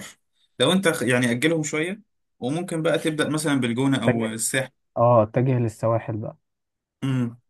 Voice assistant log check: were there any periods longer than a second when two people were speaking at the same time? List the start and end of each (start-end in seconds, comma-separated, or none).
none